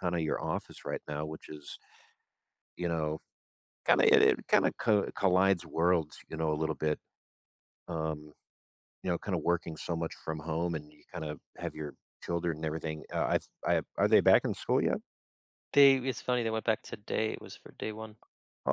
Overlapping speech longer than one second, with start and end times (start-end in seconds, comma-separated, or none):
none